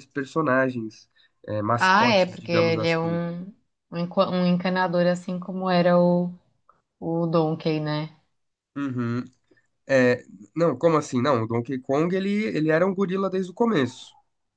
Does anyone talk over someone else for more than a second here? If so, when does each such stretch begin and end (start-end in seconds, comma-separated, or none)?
1.8-3.2